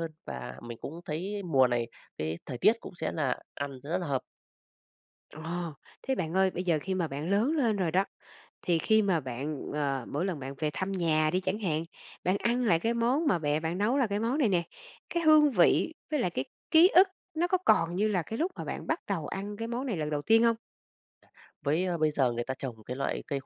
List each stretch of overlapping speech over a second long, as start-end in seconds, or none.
none